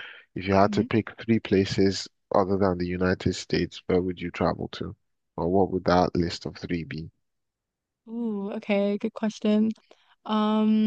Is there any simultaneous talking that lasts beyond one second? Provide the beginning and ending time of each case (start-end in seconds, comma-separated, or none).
none